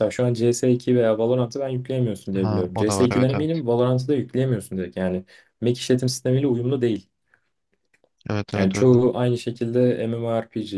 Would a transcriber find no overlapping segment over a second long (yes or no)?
no